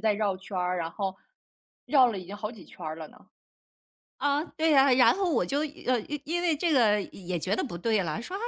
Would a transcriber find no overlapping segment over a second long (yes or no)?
yes